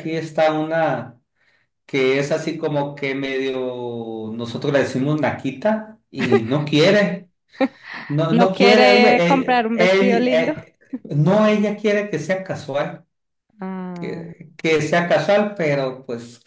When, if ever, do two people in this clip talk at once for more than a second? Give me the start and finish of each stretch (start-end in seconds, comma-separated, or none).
8.3-10.5